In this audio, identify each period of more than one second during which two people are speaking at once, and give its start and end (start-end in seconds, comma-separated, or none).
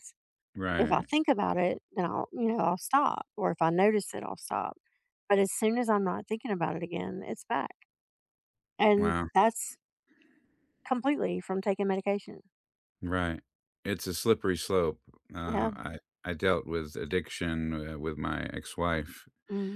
none